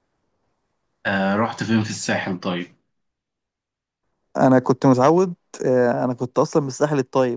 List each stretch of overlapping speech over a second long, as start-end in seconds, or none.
none